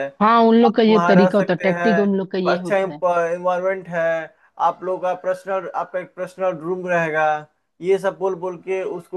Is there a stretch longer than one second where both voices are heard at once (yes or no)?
yes